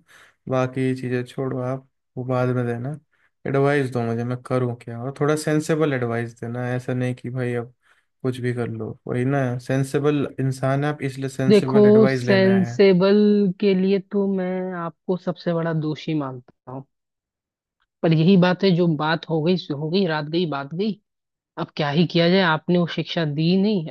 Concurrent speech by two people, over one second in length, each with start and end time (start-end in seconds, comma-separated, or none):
11.5-12.8